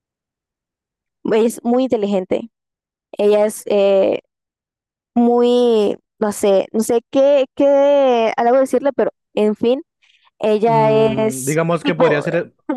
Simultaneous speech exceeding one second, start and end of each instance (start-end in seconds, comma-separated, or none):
10.6-12.2